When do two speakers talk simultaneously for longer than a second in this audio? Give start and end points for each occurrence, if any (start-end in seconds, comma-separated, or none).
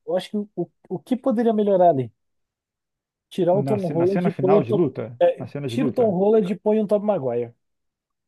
3.5-6.2